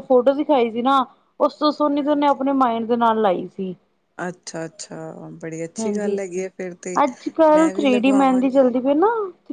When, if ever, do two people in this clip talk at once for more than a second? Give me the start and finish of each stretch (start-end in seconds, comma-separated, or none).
none